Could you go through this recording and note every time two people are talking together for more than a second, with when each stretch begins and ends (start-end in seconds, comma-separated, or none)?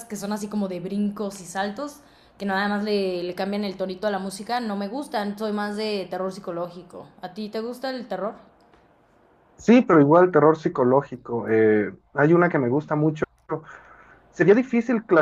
none